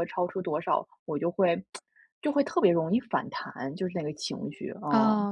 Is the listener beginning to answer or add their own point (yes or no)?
yes